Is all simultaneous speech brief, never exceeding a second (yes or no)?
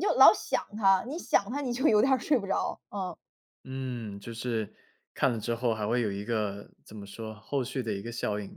yes